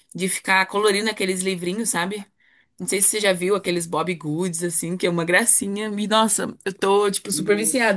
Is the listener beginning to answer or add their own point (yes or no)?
no